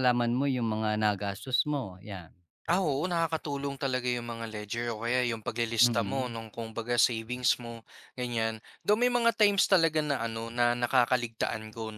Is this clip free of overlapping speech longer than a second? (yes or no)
yes